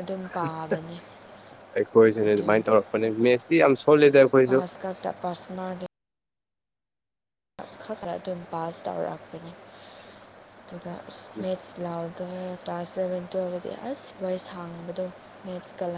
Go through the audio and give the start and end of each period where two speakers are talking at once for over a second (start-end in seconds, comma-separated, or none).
none